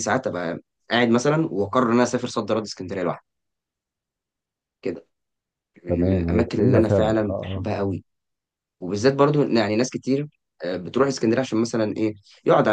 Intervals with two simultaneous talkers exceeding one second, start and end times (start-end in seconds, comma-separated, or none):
5.9-7.7